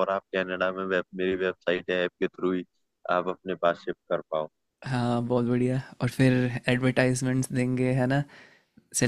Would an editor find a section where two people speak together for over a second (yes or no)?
no